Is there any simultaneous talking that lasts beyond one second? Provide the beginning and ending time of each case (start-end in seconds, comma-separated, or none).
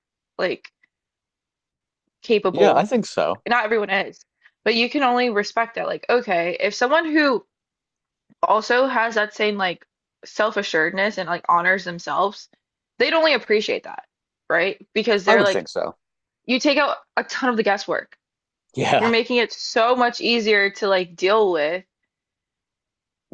none